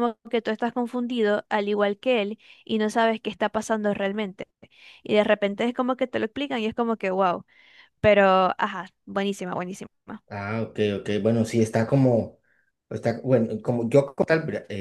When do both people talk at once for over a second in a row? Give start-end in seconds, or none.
none